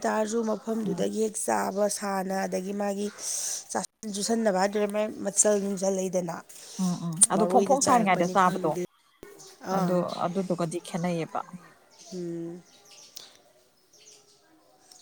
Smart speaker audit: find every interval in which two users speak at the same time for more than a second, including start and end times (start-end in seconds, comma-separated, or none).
7.3-8.7